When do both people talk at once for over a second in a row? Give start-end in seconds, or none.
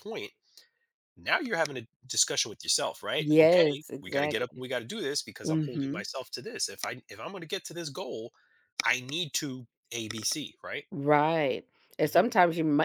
3.2-4.6